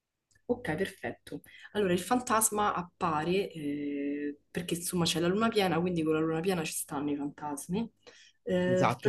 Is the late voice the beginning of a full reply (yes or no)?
yes